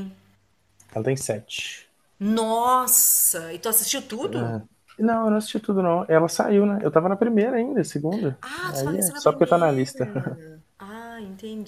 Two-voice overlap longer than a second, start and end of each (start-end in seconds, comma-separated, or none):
8.4-10.1